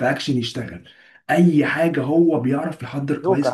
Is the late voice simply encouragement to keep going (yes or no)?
yes